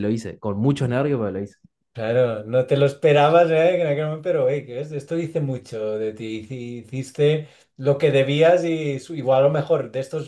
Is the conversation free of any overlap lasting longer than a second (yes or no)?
yes